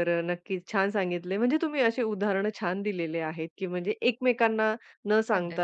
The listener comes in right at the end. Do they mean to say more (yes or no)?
no